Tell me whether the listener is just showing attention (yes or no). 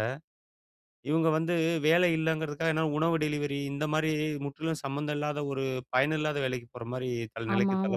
no